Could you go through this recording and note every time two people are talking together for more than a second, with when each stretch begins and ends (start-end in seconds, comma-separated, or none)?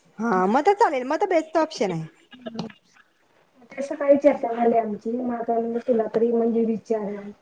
none